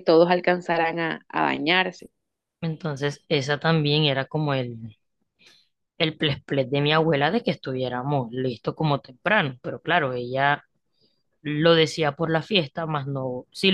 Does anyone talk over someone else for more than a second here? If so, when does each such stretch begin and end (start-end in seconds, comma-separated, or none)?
none